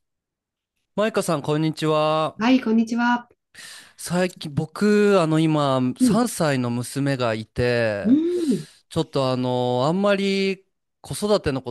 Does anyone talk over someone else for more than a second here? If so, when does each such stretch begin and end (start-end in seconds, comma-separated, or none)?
none